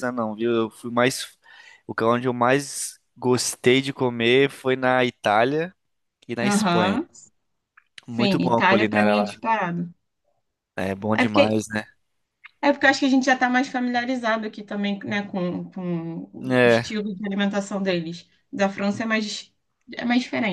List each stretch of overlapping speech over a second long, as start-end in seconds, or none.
8.1-9.4